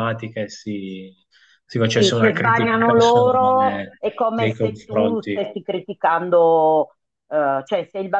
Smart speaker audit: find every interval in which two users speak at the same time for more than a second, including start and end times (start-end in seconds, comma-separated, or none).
1.9-5.5